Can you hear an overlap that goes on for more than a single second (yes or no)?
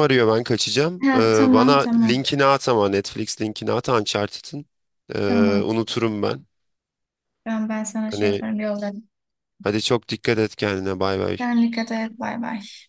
yes